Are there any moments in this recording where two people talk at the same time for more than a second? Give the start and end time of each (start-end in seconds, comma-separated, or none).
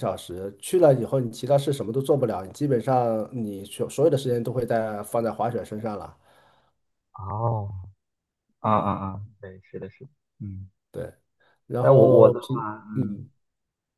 11.8-13.2